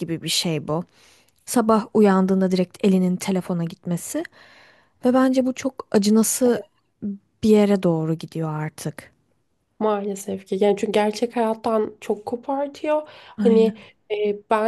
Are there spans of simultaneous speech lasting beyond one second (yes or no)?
no